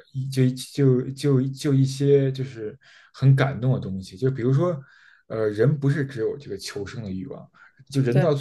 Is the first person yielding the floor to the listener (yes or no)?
no